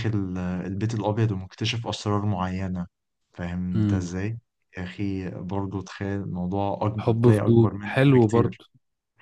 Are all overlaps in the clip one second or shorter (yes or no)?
no